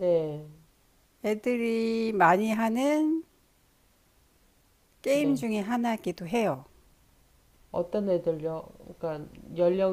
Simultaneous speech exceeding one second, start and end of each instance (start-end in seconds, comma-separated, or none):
none